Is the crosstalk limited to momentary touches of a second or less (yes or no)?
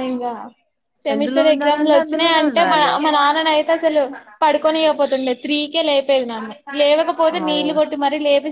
no